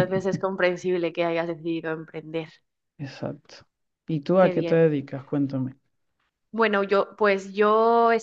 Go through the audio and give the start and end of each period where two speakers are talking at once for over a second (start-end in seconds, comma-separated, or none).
none